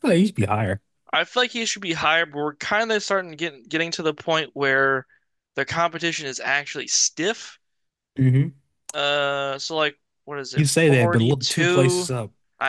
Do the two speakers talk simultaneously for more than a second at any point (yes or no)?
yes